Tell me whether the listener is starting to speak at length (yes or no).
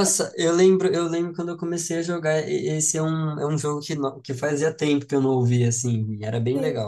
yes